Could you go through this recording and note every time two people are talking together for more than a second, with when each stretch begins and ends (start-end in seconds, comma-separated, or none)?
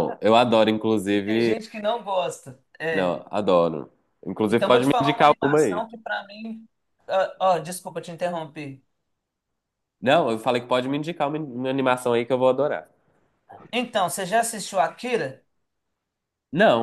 4.5-5.8